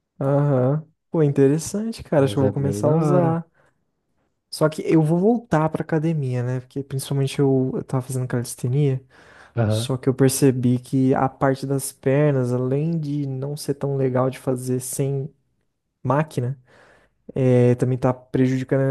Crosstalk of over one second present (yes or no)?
yes